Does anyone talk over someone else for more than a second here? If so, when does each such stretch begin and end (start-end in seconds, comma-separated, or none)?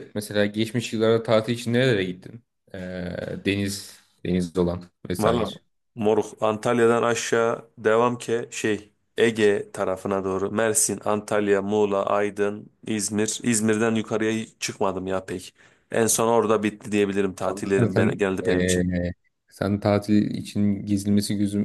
17.4-18.9